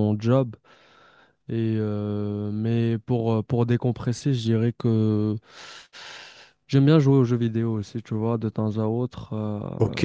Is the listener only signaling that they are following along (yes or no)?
no